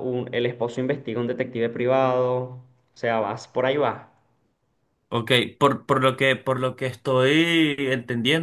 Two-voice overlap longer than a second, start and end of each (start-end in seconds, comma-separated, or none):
none